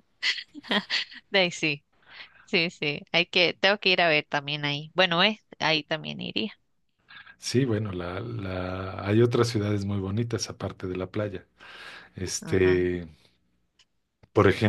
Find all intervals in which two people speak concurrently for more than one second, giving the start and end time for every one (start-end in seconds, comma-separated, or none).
none